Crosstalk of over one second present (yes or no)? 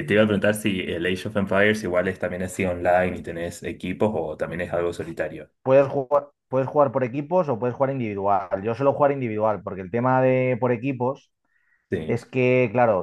no